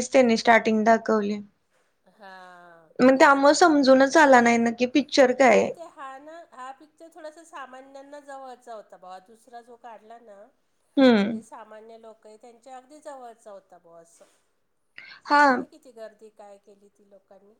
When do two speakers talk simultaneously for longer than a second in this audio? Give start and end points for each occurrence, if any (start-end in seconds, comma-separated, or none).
none